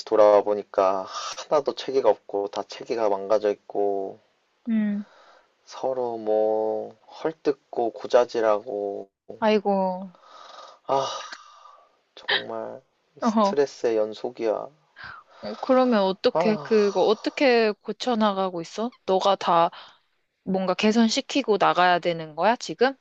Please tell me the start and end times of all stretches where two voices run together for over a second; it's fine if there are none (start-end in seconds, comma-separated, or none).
none